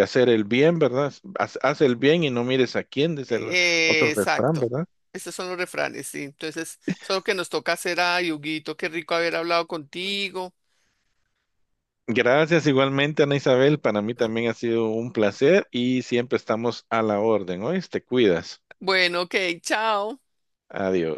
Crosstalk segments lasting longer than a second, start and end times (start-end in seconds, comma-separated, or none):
3.3-4.7